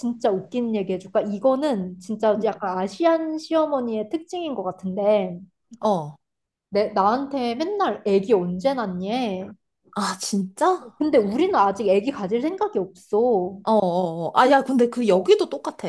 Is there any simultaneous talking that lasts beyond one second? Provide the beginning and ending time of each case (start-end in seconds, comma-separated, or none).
none